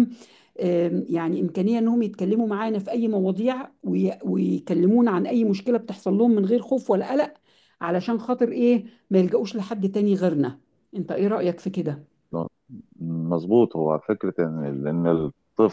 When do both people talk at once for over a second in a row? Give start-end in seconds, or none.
none